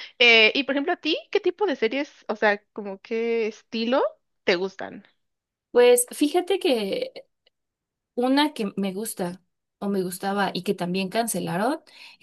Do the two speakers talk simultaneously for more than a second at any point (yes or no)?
no